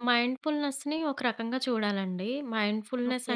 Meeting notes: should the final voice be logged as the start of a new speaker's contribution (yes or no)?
no